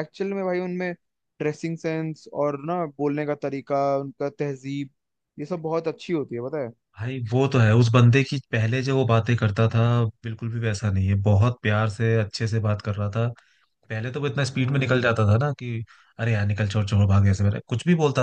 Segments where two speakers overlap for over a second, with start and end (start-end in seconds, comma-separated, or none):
none